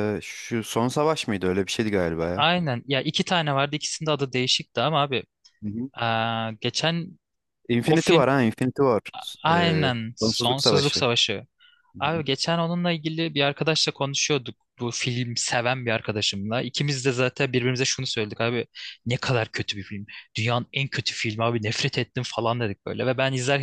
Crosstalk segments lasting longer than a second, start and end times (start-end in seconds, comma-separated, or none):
9.5-11.0